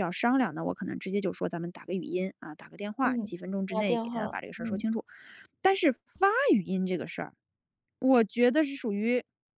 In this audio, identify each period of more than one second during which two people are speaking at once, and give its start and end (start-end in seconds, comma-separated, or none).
3.0-4.9